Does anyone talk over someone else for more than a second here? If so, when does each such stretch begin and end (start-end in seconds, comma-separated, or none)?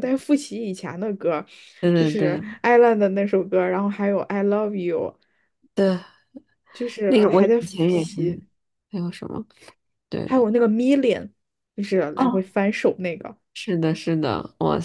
7.1-8.4